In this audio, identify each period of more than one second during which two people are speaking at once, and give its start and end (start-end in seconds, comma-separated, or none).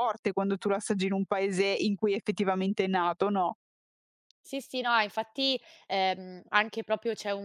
none